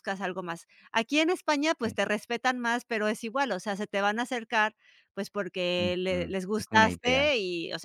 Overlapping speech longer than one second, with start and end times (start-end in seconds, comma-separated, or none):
5.8-7.2